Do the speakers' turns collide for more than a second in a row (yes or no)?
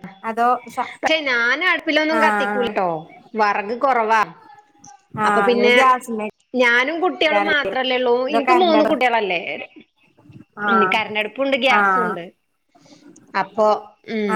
no